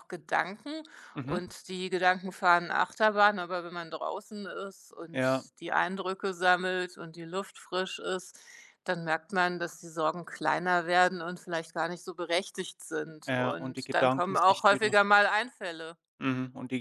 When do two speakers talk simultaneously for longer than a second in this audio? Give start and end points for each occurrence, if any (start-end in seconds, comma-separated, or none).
13.3-15.0